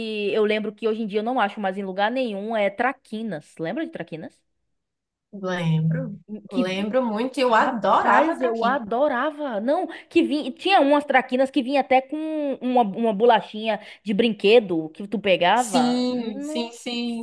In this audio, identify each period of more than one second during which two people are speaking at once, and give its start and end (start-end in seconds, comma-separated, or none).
7.6-8.8